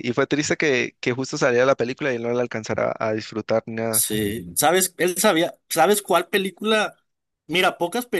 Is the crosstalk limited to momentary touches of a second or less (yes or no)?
yes